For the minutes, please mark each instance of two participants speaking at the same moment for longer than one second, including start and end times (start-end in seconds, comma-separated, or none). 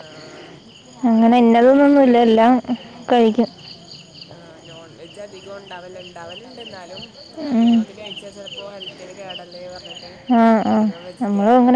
1.1-2.4